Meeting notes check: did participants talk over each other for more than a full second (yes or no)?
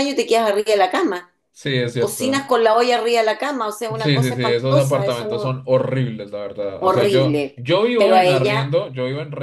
yes